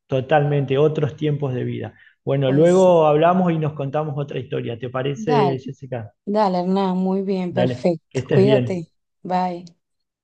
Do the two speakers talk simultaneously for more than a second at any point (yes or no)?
yes